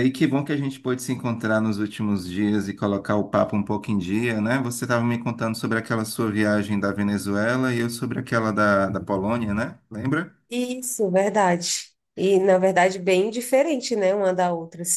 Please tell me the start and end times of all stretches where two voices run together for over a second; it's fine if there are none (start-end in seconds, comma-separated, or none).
none